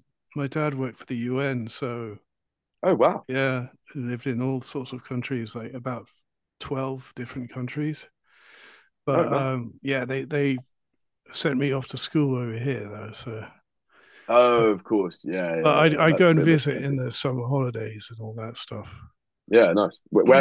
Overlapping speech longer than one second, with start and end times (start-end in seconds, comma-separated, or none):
15.6-17.0